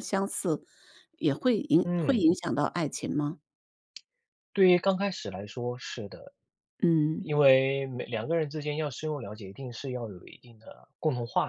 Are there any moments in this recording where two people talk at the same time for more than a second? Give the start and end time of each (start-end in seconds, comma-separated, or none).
none